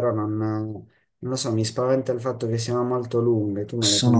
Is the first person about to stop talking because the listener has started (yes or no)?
yes